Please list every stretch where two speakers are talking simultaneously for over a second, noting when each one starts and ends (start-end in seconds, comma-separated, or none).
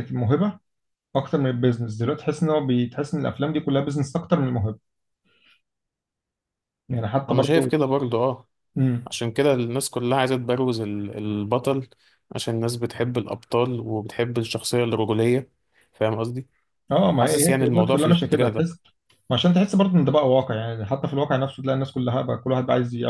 17.2-18.6